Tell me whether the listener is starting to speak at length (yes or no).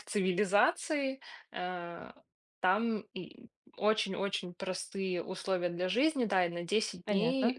no